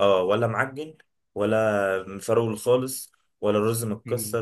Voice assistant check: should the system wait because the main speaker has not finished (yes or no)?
yes